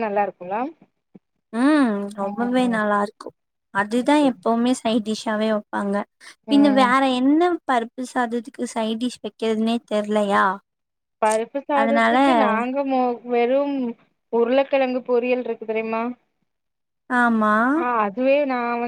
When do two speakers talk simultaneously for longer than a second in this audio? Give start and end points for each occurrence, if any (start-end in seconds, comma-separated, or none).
none